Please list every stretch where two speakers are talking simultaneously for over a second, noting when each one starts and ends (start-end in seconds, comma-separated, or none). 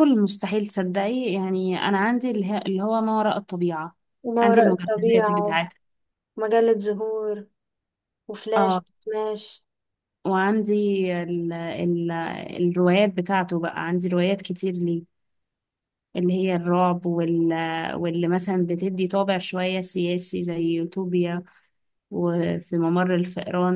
4.4-5.6